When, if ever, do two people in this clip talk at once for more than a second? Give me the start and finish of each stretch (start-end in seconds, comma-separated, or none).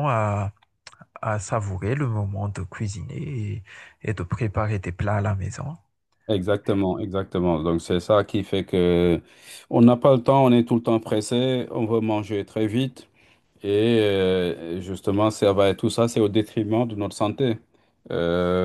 none